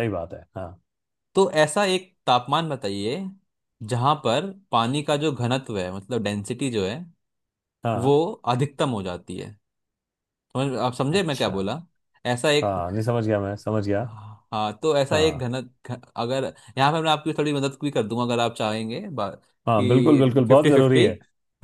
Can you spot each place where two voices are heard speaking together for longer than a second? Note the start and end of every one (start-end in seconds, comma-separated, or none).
19.8-21.1